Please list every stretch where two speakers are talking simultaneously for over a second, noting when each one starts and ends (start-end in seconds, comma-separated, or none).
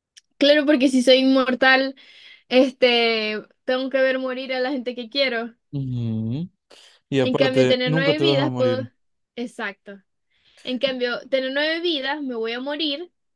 7.2-8.9